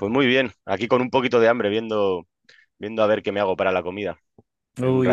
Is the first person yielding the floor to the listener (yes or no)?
yes